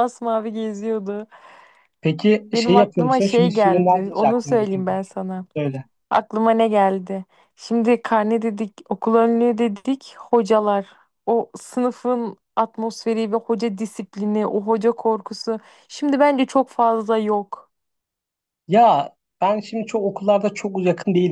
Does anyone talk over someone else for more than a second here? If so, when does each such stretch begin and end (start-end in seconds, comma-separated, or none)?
2.5-5.0